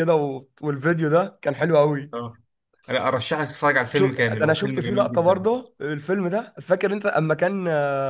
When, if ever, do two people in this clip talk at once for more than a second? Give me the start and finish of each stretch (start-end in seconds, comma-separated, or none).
3.9-5.5